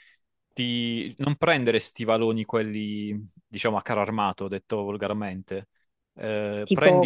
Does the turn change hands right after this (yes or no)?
yes